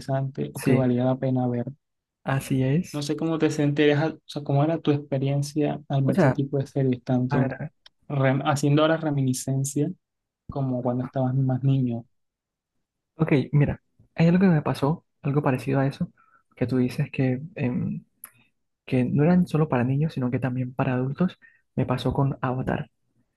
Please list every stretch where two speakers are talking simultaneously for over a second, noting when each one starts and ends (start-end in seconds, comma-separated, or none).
none